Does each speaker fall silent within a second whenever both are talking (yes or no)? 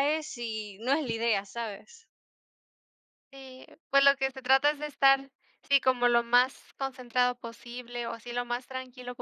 yes